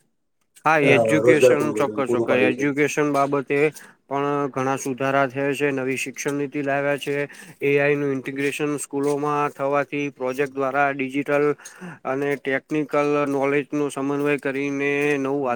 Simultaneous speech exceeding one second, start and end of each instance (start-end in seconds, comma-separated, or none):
0.9-2.7